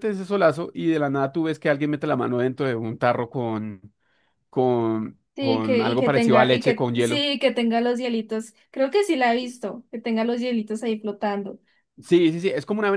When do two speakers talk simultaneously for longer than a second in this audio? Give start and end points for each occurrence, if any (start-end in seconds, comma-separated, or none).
5.3-7.3